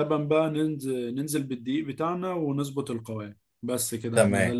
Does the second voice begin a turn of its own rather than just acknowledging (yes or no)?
yes